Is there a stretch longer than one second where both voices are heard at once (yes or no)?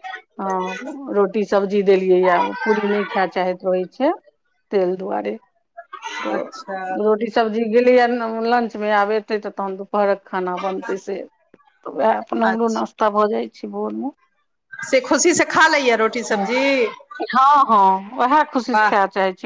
no